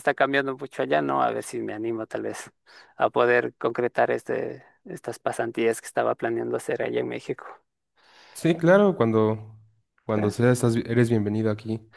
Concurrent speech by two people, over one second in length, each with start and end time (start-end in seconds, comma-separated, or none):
none